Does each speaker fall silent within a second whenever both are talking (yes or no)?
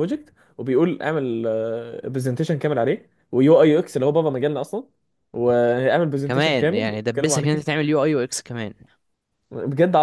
no